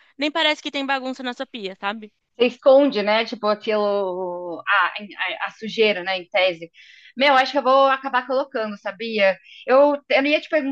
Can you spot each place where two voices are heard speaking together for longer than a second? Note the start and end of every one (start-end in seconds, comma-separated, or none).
none